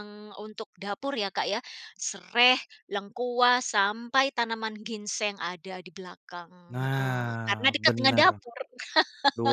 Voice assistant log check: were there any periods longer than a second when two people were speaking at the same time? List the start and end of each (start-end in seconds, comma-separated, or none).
6.7-8.4